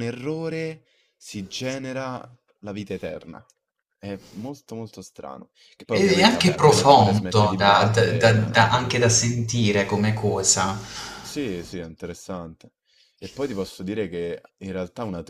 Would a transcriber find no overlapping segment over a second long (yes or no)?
no